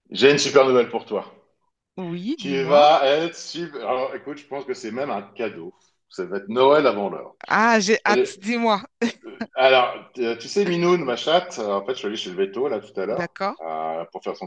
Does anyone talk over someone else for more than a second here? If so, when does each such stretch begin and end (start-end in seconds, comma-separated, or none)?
none